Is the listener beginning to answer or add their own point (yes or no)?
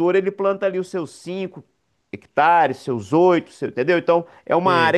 no